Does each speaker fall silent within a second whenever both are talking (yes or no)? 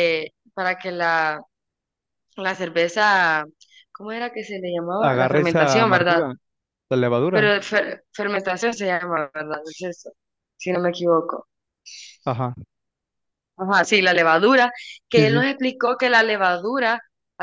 no